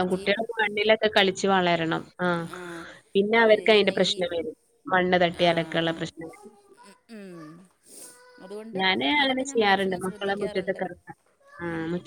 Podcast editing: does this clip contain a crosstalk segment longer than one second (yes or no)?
yes